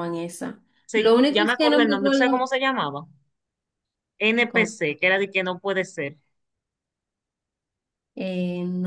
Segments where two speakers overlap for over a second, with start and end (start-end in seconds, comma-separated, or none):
0.8-2.4